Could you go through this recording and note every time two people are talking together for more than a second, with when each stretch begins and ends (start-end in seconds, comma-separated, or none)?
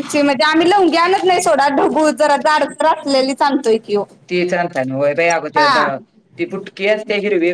none